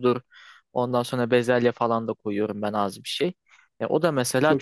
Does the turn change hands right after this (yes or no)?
no